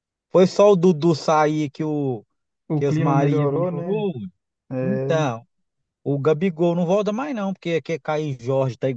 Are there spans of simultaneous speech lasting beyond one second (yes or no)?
yes